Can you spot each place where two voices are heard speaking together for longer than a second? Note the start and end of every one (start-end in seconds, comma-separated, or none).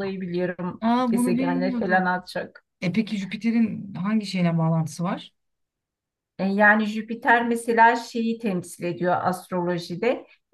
0.8-2.1